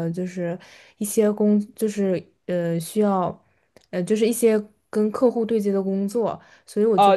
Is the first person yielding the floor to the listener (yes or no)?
yes